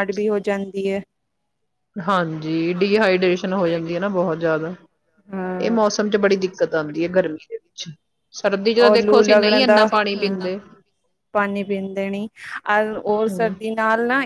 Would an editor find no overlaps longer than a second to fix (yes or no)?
yes